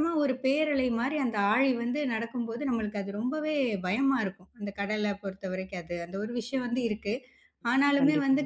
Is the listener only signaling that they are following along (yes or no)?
yes